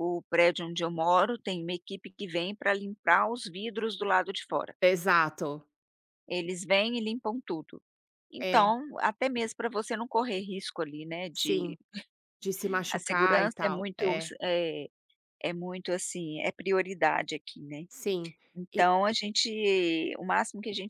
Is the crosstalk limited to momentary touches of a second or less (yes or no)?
no